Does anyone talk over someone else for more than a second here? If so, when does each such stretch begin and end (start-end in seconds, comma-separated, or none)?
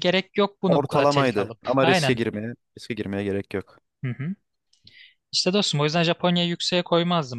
0.7-2.2